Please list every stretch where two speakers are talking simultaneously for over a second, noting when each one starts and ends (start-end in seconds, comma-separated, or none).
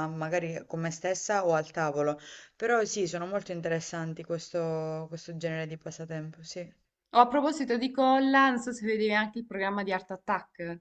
none